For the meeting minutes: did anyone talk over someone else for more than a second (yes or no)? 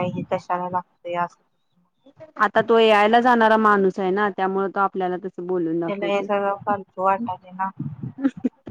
no